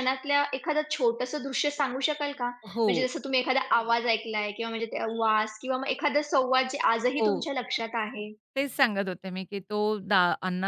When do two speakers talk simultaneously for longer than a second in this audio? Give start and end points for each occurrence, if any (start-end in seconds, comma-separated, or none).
none